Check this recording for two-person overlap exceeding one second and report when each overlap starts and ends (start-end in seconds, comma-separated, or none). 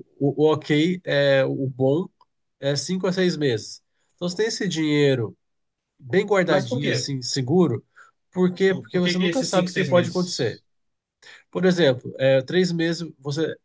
8.7-10.2